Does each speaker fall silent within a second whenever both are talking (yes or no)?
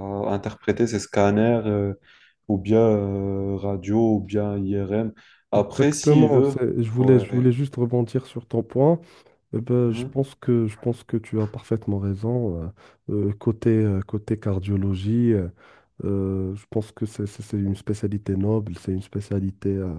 no